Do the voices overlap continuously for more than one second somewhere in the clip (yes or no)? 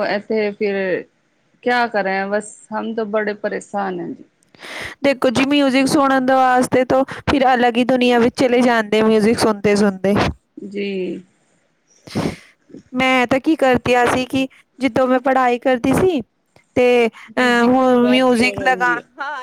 yes